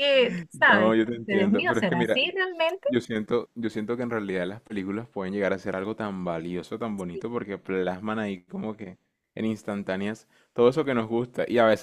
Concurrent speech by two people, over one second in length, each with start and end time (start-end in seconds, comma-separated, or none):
0.5-2.2